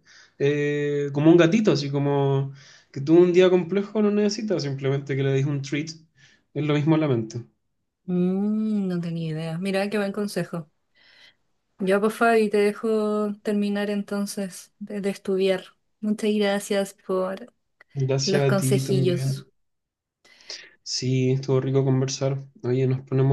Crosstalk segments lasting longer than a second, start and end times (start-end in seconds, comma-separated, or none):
18.2-19.4